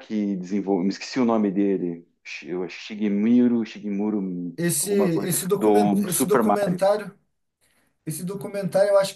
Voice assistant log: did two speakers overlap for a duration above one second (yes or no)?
yes